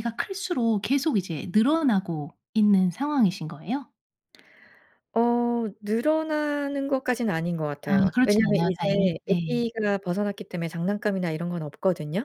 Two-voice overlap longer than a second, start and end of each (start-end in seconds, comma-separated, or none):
7.8-9.6